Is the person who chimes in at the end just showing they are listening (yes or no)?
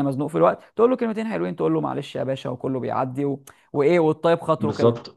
no